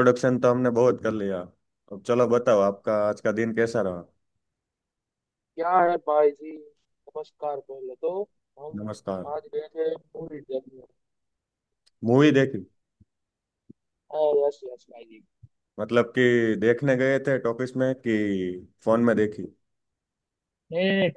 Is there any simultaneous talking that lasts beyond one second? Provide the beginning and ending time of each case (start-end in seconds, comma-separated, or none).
none